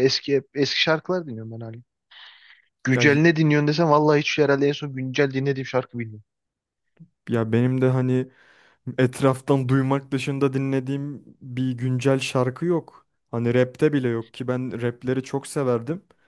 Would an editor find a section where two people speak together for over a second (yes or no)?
no